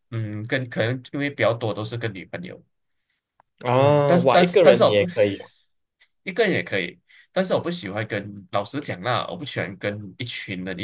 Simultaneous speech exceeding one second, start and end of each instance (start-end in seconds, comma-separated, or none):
3.7-5.1